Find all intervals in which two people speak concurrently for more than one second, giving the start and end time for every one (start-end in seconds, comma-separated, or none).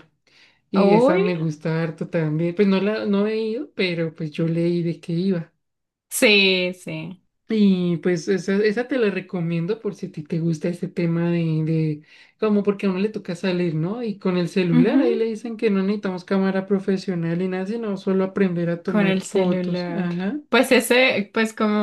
18.8-20.1